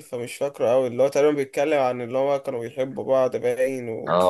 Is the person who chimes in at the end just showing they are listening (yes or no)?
no